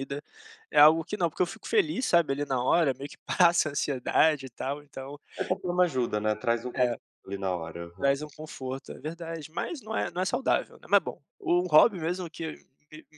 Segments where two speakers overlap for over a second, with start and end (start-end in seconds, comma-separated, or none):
none